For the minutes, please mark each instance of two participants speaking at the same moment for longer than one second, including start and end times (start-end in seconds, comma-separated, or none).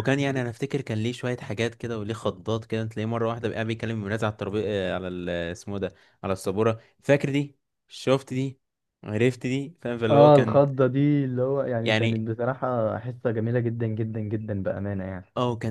none